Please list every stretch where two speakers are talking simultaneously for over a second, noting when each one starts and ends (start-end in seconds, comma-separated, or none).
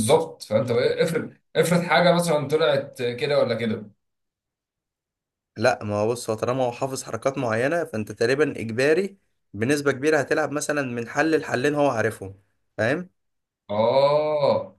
none